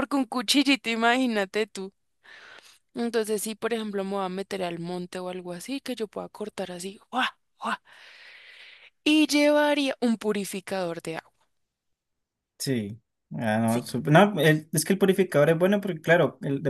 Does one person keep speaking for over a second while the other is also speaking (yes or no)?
no